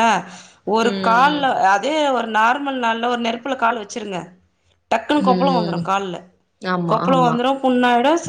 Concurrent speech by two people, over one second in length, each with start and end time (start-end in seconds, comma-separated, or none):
none